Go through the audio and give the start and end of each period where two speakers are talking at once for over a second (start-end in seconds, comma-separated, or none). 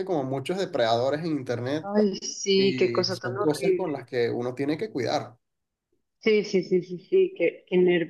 2.6-4.0